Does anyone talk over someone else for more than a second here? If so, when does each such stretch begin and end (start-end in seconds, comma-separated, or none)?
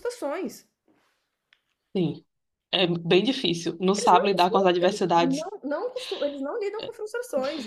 4.0-5.5